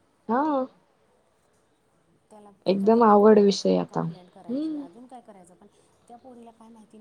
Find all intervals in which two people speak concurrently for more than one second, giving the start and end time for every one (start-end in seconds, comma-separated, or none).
2.7-4.8